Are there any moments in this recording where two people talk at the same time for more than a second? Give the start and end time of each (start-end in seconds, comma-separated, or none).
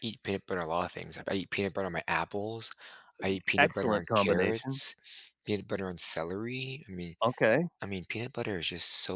3.2-4.8